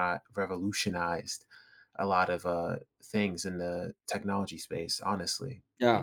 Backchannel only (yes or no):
no